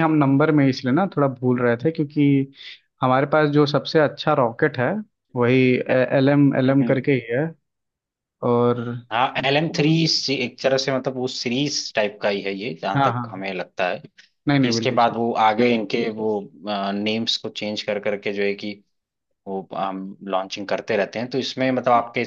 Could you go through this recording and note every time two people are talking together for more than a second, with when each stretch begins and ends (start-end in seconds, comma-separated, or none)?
none